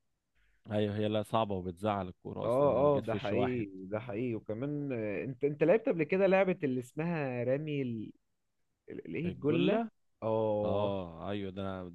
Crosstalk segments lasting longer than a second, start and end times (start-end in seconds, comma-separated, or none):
2.4-3.6